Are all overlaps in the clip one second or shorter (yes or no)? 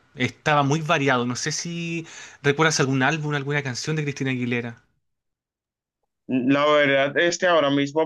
yes